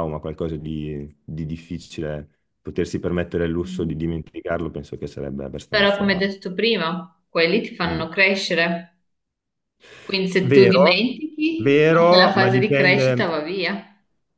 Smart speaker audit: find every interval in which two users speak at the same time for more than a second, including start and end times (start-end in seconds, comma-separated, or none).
11.6-13.4